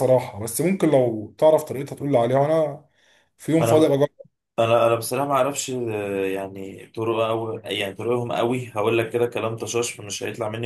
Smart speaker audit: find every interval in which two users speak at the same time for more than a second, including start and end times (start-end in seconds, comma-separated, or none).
none